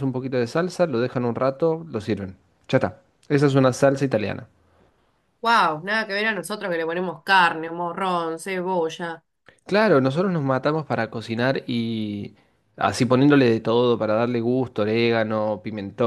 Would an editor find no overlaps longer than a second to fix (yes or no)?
yes